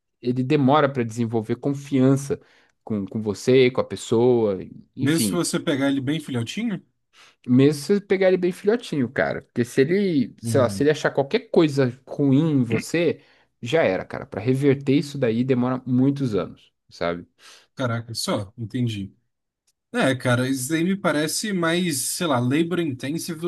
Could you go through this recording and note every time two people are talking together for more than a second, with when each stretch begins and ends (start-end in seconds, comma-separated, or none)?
none